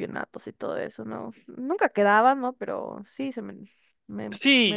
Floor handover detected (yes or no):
yes